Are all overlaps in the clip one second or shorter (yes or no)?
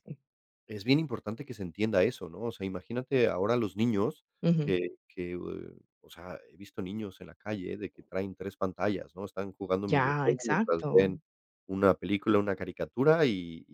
no